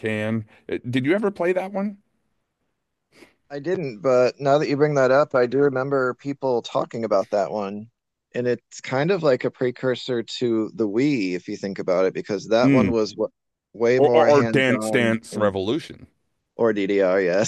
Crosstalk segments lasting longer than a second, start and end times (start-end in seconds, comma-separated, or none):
14.0-15.5